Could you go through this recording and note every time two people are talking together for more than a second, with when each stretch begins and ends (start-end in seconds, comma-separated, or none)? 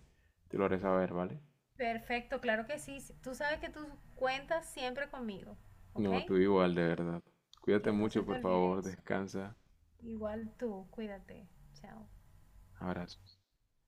7.8-9.0